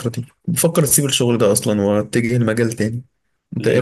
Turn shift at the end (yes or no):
yes